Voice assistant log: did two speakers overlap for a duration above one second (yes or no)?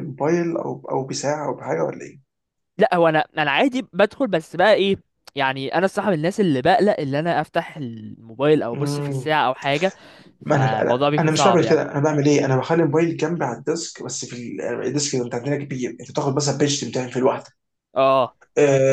yes